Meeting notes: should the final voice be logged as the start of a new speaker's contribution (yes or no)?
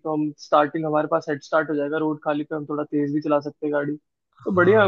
yes